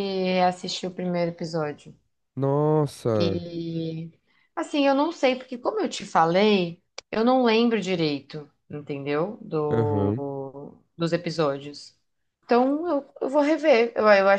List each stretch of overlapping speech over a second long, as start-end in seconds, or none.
none